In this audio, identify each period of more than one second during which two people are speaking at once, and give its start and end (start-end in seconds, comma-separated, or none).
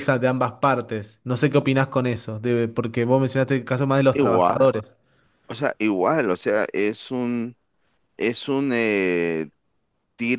none